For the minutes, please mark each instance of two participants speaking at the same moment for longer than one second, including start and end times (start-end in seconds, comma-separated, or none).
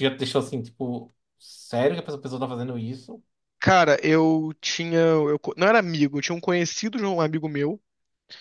none